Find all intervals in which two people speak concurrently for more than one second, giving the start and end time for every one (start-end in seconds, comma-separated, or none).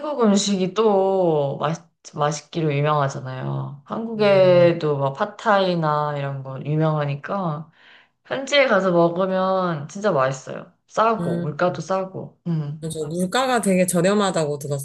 none